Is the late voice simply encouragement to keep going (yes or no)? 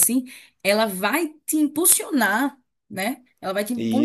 yes